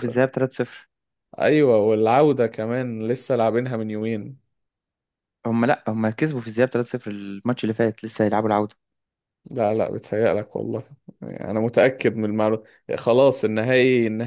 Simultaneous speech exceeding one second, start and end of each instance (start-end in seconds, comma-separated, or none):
none